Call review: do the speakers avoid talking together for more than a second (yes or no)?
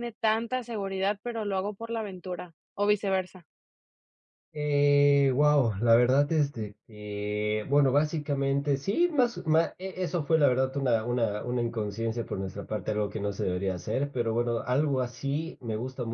yes